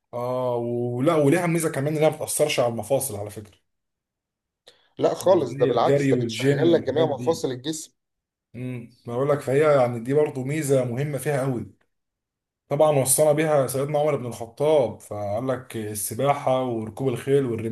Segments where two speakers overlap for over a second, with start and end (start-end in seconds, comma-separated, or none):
5.4-7.4